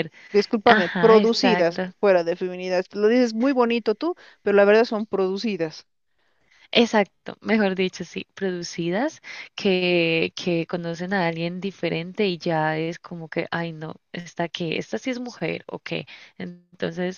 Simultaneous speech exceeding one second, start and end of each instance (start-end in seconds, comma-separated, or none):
0.7-1.9